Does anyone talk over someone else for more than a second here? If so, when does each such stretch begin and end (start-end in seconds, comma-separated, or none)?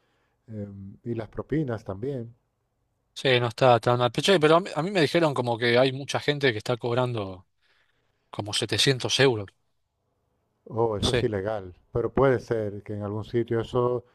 none